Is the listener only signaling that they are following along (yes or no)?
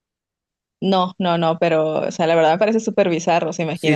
no